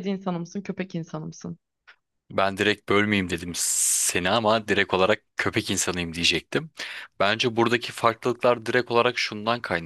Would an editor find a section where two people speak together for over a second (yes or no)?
no